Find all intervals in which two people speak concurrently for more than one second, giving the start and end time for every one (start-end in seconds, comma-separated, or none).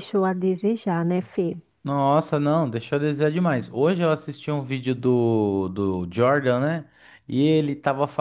none